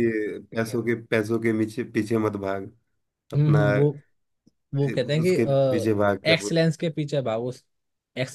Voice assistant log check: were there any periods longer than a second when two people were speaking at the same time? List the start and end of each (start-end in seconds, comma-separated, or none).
5.2-6.6